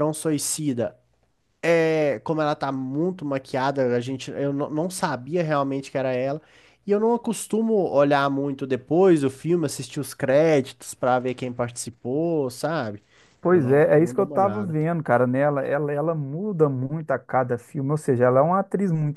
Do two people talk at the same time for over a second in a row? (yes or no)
yes